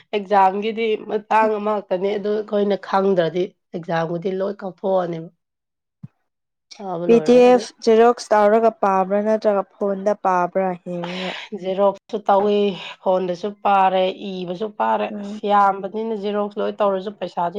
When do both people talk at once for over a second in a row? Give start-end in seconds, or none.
none